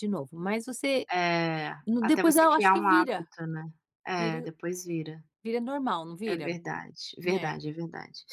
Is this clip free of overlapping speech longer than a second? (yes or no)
no